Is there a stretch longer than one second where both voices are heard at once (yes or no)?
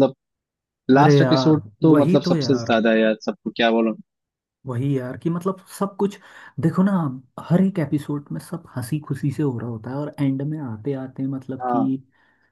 yes